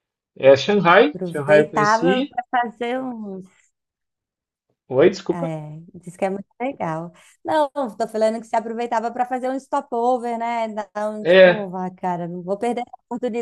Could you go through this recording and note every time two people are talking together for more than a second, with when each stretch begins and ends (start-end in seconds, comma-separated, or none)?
1.1-2.3